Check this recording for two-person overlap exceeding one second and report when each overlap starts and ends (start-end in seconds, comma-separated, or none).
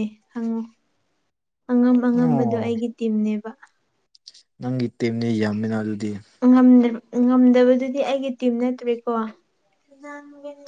none